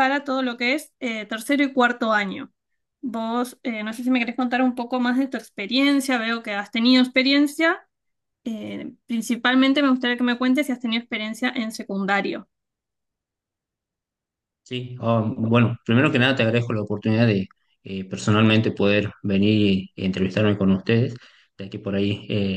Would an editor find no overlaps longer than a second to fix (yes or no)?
yes